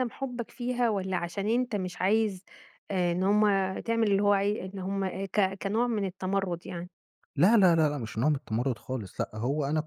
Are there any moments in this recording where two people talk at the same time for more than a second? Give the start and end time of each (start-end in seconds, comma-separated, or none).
none